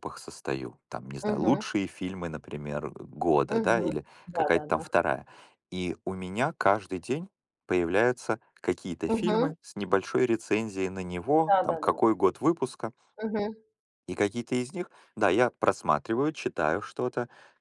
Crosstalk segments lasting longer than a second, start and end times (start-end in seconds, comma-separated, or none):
3.5-4.8